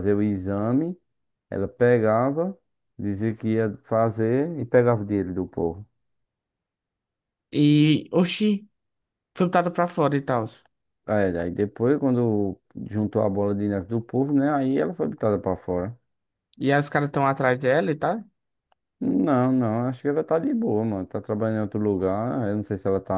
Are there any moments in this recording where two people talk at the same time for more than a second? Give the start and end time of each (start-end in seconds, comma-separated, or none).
none